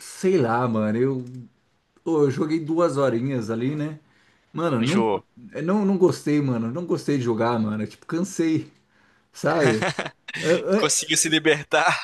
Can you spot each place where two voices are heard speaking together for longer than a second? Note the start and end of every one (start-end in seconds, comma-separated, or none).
none